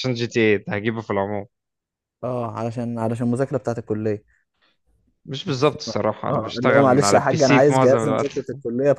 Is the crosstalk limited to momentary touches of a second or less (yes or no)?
no